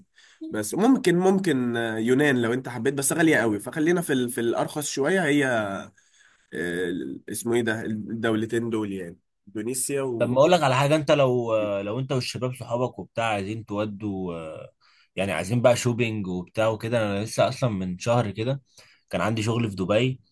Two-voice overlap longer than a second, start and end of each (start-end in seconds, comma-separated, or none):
none